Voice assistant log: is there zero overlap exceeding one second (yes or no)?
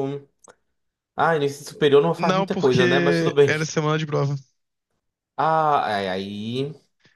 no